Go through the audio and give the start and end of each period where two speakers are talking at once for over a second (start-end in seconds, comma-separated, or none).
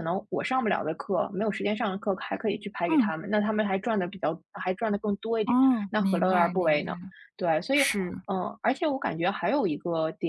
5.4-6.9